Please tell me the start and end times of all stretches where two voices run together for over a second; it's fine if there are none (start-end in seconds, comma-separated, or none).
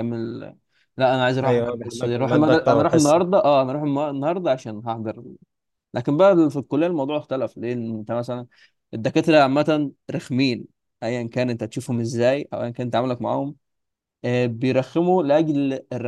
1.4-3.2